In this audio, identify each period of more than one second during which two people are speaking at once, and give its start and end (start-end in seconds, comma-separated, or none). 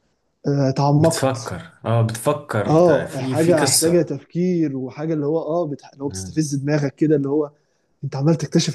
2.7-4.1